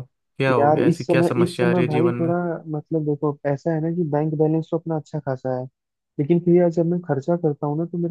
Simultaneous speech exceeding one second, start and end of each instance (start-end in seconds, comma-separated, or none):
0.6-2.3